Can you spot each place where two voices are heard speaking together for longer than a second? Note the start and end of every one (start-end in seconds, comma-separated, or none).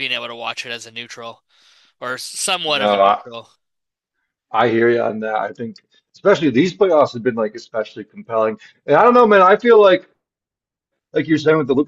none